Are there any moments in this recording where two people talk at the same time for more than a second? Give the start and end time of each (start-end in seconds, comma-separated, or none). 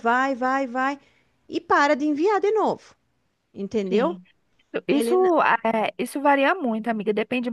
none